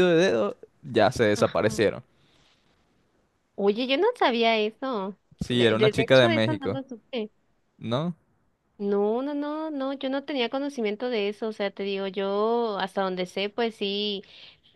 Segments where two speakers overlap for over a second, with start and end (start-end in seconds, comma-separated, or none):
5.4-6.8